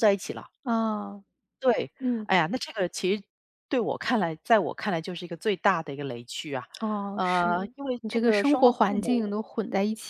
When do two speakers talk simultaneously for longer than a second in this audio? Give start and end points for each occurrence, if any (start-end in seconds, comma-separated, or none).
7.1-9.3